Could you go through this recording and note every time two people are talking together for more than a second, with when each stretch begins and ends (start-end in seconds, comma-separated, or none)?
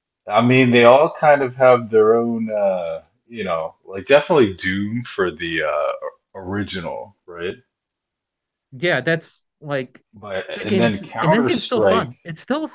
10.6-12.1